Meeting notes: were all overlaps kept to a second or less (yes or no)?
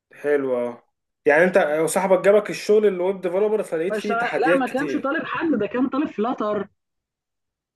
no